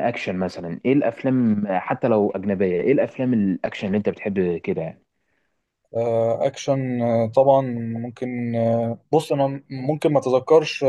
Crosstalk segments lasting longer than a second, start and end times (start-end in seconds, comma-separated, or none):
none